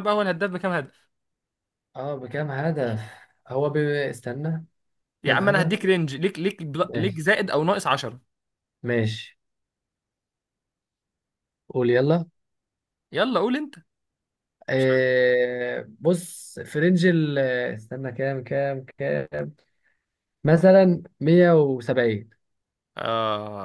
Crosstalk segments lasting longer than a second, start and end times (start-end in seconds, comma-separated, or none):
none